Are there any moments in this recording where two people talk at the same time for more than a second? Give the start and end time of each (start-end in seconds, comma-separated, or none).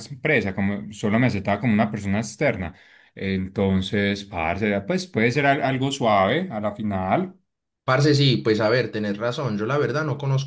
none